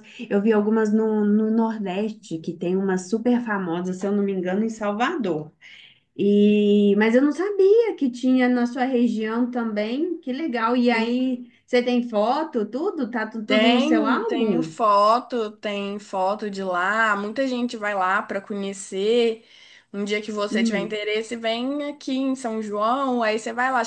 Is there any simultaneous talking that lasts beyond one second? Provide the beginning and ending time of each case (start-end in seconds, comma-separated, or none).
13.5-14.8